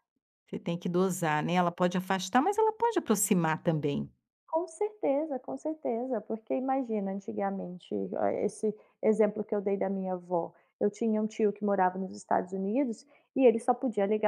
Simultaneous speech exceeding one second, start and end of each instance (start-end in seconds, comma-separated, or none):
none